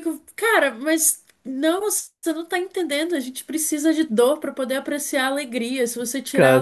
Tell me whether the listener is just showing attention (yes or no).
yes